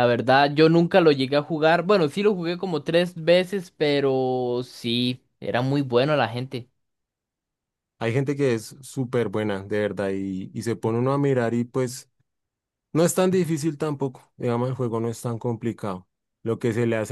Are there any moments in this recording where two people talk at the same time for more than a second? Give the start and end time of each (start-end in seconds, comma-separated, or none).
none